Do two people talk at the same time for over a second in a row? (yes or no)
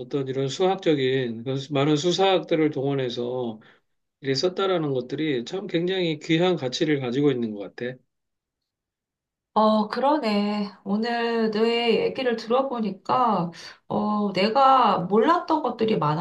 no